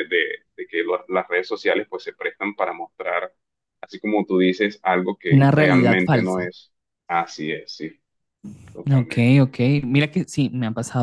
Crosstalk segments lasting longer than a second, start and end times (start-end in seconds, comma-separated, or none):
5.3-6.5